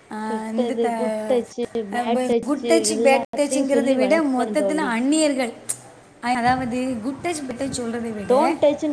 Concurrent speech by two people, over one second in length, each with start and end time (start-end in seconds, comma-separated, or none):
2.0-4.9